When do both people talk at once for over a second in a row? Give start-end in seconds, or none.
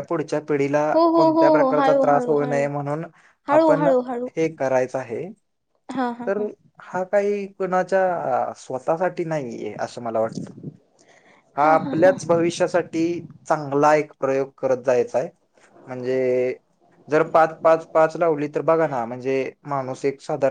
0.9-2.7